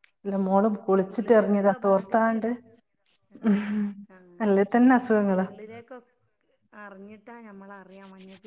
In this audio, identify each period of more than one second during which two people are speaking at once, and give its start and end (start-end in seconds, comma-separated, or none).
1.1-2.4